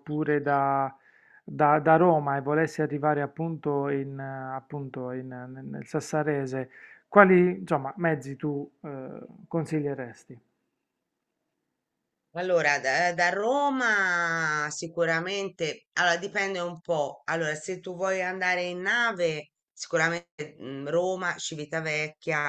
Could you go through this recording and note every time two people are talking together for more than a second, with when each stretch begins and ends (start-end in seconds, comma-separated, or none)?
none